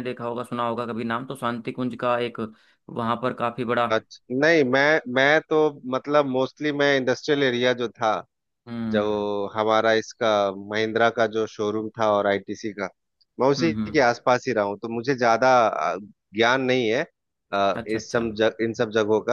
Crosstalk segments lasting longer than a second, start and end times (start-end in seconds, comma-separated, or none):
none